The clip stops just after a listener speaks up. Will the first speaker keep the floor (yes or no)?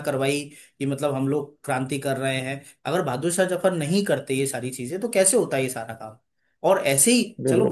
yes